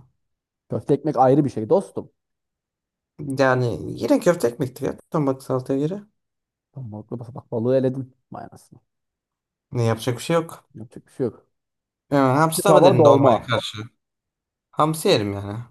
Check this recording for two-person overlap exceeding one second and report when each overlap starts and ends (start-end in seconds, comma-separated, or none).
12.3-13.5